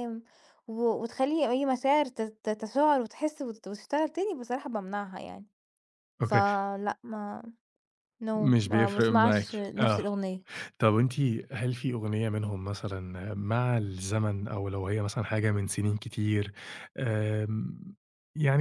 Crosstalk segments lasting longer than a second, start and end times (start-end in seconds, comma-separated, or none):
8.3-10.1